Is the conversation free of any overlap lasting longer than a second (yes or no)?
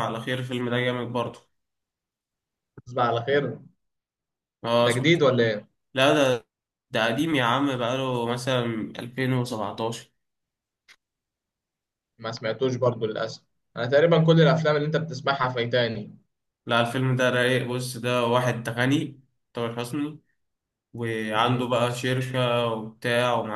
yes